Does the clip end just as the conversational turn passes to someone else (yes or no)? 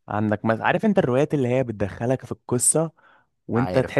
no